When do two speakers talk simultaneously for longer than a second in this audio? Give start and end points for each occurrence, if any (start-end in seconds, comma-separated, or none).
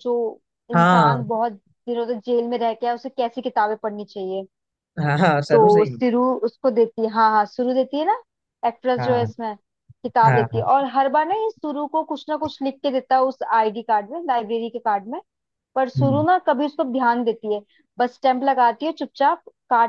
none